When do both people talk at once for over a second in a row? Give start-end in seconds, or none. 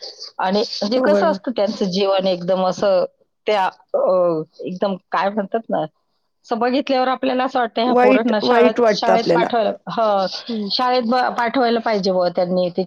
8.0-9.4